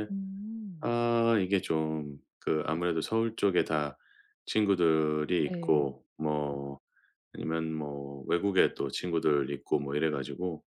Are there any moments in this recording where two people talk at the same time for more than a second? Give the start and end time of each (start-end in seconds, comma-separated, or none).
none